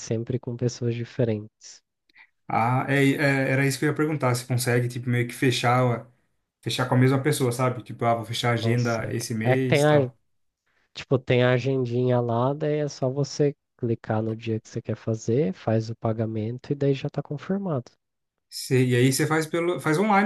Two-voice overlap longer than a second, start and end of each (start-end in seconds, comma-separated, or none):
8.6-10.1